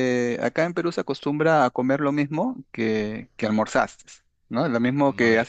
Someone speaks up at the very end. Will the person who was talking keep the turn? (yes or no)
no